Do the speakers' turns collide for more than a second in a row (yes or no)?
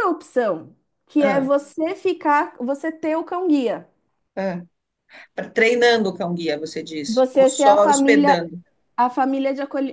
yes